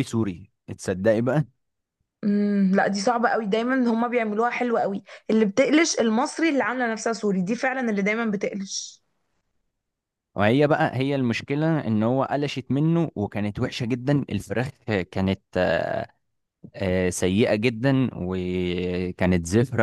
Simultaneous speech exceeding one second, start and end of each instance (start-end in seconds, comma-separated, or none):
none